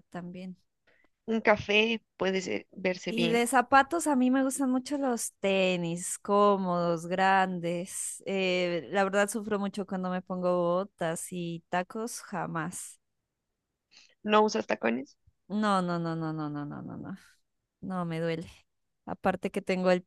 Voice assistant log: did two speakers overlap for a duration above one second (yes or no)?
no